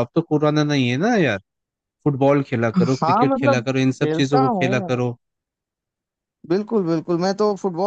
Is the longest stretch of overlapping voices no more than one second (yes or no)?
no